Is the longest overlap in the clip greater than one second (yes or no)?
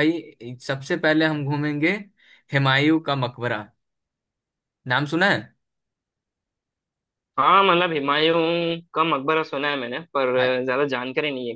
no